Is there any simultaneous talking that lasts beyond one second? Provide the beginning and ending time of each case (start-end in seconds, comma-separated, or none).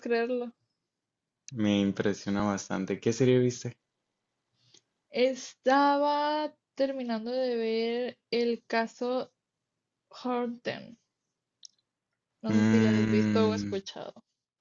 12.5-13.8